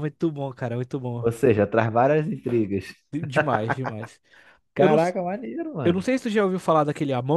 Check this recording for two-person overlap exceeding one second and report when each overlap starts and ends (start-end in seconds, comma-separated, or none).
none